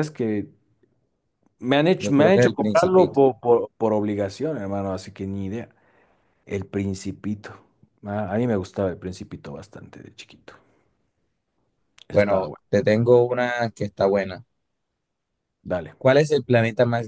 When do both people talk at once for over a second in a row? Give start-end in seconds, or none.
2.0-3.2